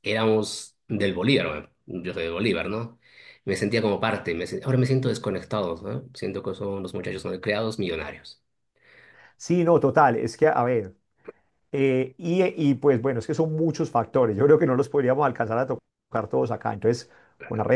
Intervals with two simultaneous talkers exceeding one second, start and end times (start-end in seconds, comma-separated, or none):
none